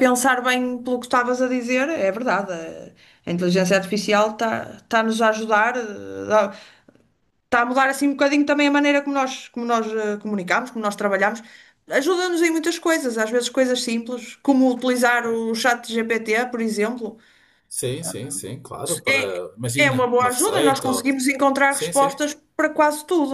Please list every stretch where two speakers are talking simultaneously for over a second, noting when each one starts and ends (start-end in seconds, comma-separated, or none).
19.8-21.1